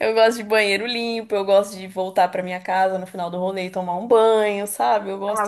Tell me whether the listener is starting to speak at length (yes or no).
yes